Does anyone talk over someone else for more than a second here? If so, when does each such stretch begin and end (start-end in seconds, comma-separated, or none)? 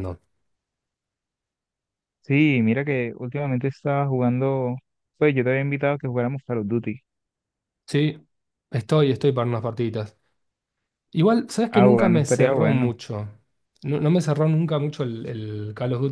11.7-12.9